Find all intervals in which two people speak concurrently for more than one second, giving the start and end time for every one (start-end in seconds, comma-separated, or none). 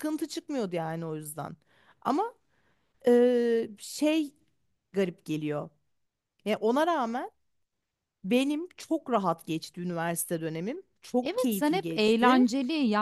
11.2-12.4